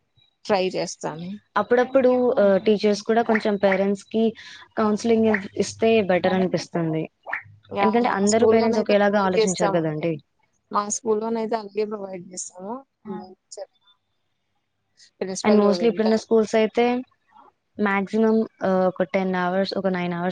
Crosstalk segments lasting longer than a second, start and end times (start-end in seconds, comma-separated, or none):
8.1-10.1